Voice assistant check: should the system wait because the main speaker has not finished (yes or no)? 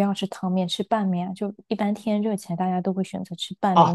no